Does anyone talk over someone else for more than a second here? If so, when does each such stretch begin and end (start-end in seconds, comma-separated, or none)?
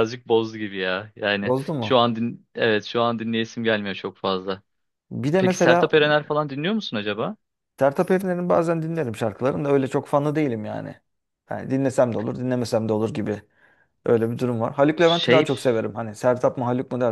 none